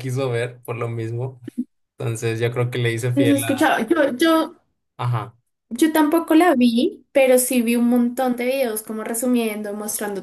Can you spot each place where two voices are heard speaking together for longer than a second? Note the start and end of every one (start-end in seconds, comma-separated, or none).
none